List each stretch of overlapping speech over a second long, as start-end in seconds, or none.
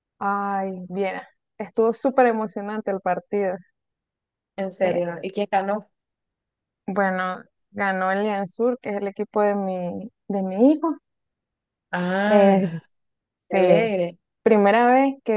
none